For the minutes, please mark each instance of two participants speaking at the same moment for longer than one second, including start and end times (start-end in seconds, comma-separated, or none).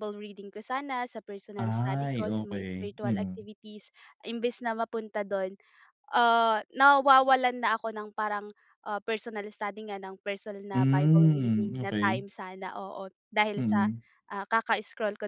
1.6-3.4, 10.7-12.2